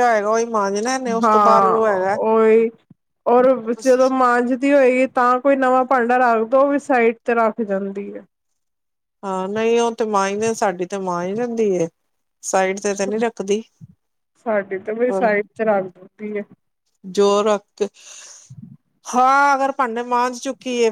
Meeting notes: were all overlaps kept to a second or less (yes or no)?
yes